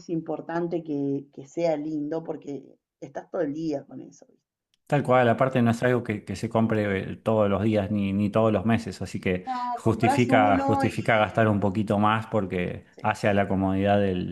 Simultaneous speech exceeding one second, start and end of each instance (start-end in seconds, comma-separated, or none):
9.4-11.0